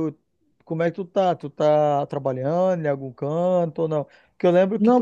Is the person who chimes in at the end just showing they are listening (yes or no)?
yes